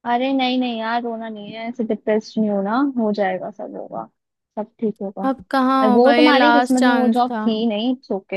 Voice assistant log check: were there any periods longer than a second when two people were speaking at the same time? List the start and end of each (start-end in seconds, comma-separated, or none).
5.8-7.5